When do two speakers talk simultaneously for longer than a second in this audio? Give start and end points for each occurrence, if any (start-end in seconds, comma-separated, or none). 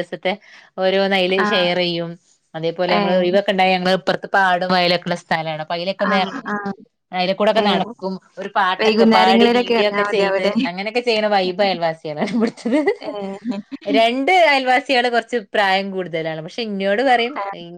8.8-10.5